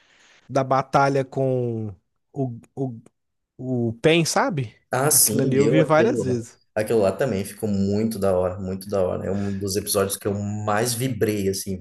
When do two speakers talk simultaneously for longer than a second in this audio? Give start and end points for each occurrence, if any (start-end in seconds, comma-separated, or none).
5.1-6.4